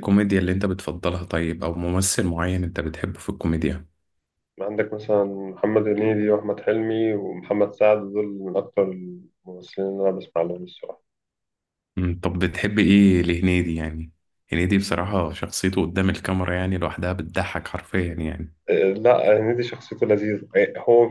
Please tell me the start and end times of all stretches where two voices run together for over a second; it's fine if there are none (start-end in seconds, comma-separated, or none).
none